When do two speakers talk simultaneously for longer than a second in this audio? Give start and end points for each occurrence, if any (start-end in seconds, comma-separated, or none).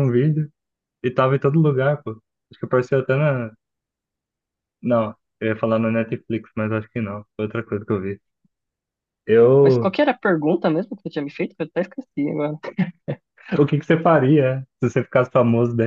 none